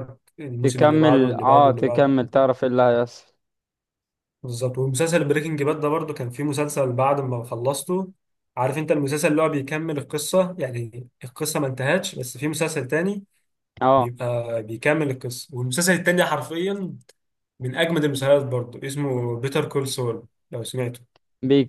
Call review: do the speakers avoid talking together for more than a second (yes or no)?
no